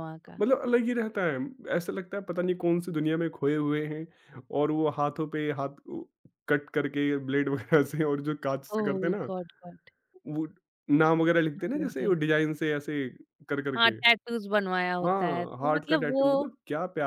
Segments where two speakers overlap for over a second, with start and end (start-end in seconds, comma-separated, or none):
15.0-16.3